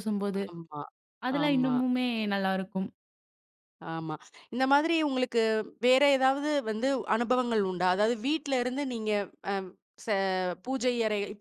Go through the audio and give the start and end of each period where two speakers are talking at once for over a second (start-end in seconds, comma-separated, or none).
none